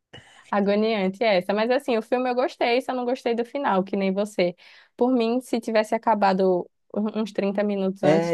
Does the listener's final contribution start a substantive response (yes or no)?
yes